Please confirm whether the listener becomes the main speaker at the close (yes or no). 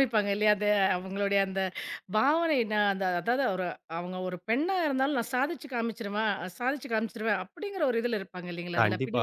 yes